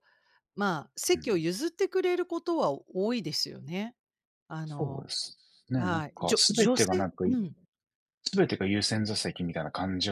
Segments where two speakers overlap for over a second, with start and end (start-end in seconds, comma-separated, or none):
5.8-7.4